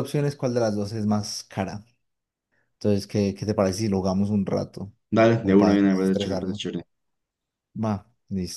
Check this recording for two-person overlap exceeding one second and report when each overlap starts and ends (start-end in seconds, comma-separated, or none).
5.4-6.7